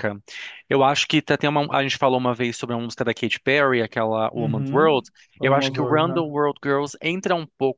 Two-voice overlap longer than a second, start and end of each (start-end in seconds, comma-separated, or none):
4.4-6.3